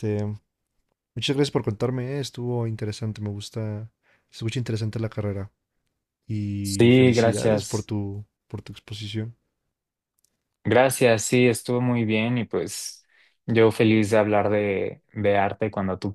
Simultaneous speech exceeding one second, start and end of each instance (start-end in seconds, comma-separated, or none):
6.6-7.9